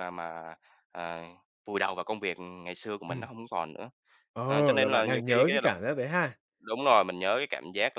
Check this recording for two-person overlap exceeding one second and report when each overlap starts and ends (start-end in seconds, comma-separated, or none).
4.5-5.8